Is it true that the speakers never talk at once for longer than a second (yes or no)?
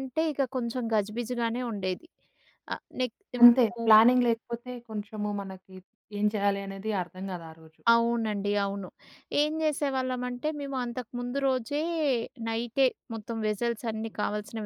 yes